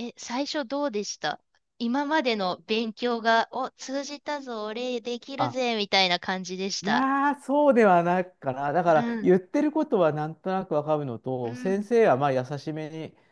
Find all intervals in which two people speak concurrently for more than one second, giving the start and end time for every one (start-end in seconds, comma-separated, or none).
none